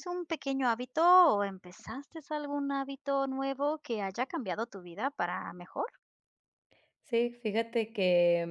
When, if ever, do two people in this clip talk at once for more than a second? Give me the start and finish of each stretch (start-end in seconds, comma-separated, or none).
none